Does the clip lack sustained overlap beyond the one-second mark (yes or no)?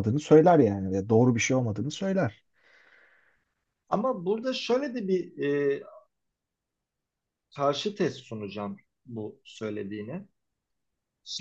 yes